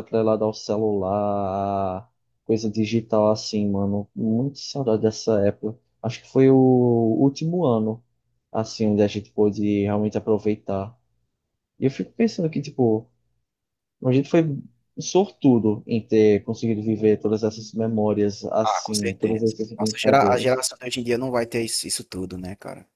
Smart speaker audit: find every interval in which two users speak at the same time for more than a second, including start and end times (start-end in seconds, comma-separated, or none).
18.6-20.6